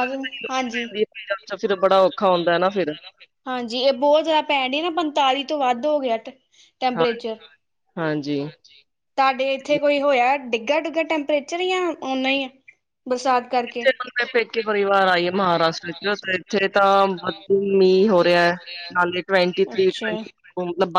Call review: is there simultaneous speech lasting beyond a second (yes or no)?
no